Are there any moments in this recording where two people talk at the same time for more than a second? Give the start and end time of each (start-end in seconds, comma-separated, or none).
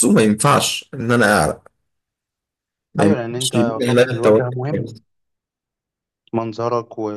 3.0-4.6